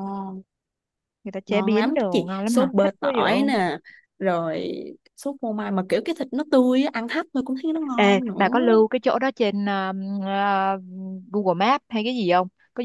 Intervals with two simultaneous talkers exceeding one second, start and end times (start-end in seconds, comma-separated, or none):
1.5-3.3